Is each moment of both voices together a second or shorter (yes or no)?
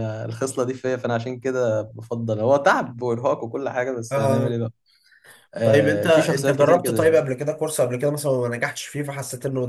no